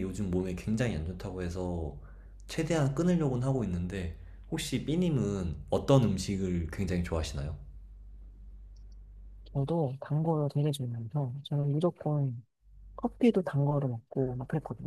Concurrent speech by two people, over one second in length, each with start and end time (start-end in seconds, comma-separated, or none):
none